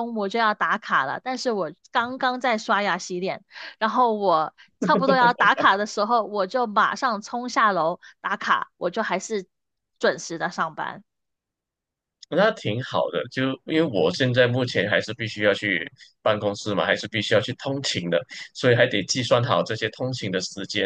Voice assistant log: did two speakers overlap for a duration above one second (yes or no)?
no